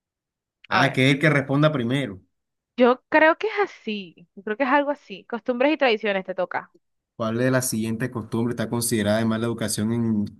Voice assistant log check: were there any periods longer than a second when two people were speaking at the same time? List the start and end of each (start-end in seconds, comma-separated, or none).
none